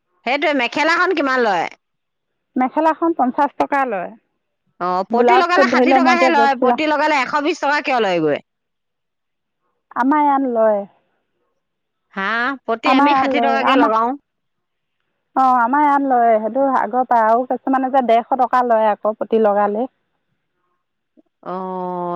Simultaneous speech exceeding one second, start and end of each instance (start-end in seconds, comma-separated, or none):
5.2-6.8